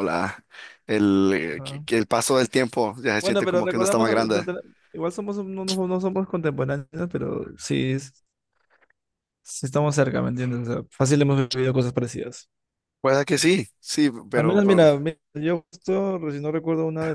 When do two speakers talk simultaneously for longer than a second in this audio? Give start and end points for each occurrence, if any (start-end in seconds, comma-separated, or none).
3.2-4.5